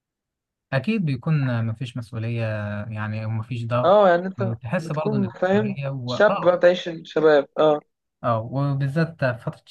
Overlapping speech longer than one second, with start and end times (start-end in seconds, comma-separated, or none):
4.6-6.6